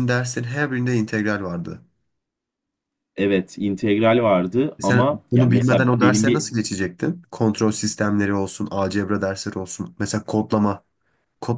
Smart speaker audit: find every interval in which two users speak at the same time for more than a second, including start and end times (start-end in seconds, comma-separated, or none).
4.8-6.5